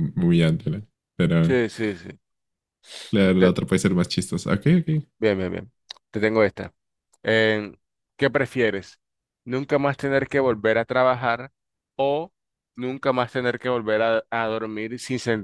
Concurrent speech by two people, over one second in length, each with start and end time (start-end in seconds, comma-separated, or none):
none